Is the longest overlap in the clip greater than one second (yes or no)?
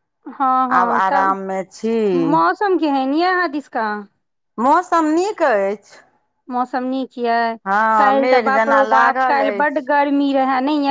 yes